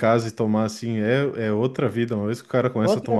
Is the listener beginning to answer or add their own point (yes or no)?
no